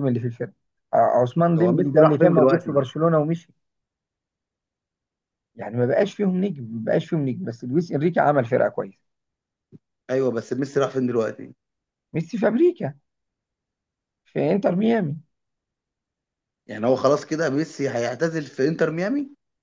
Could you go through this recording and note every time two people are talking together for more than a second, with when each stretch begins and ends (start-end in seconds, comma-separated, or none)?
1.6-2.8